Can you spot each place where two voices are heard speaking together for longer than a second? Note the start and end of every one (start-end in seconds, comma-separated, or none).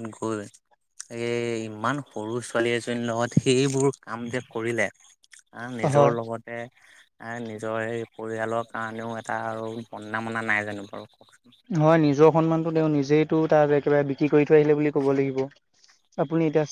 none